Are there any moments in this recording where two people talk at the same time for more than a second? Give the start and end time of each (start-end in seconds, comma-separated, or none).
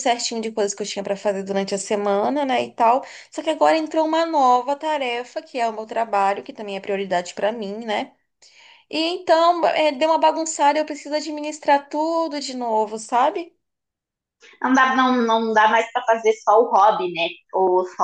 none